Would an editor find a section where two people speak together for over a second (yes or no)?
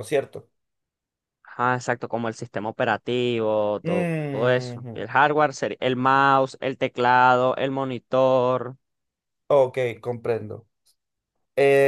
yes